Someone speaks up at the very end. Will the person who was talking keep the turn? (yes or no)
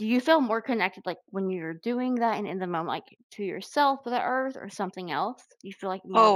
no